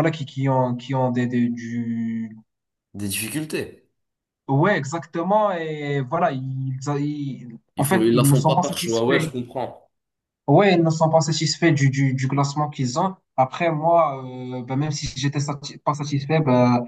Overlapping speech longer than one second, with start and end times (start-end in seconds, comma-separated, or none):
7.8-9.3